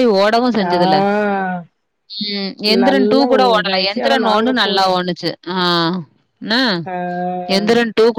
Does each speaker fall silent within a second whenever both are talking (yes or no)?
no